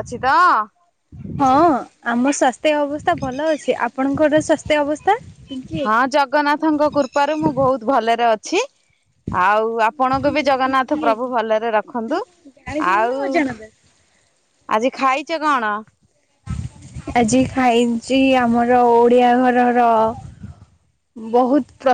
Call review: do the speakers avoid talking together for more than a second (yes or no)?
yes